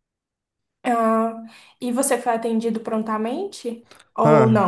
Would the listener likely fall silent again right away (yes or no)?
no